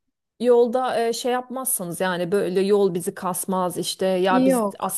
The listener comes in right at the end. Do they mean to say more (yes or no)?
no